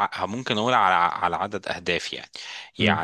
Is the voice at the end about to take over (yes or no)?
no